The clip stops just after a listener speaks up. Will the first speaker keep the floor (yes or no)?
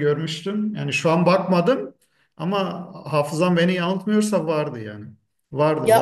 no